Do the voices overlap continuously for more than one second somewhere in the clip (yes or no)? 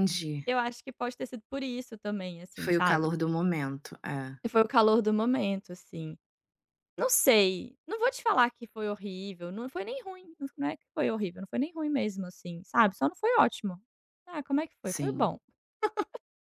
no